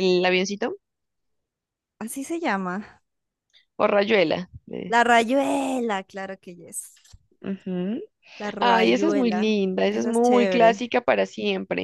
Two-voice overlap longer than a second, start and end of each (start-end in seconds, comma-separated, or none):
8.6-10.9